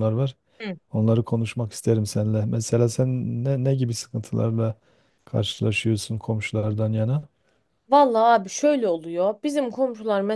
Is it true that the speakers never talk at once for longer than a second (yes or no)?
yes